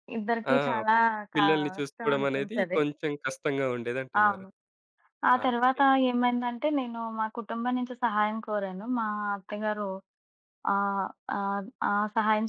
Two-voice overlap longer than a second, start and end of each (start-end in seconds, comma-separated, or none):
1.4-2.8